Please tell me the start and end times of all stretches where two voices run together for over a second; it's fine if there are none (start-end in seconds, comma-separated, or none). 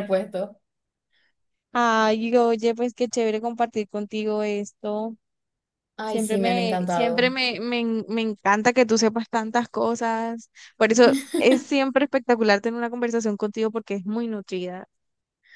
6.0-7.3